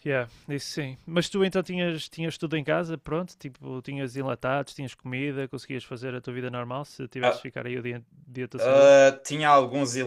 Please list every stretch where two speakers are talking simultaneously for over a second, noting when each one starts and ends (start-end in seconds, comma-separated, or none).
none